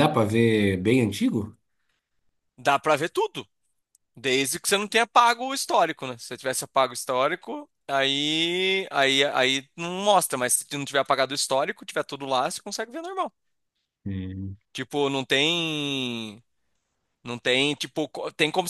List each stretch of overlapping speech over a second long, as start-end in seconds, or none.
none